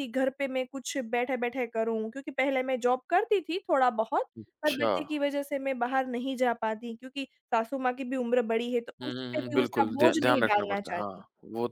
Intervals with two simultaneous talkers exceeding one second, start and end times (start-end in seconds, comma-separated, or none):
9.0-11.2